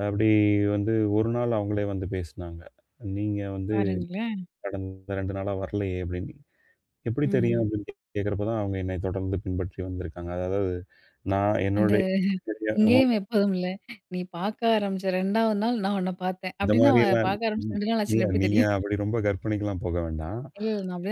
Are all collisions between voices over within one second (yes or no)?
no